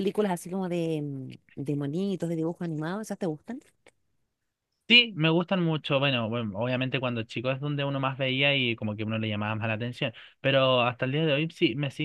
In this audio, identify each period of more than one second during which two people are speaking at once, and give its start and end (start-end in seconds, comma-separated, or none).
none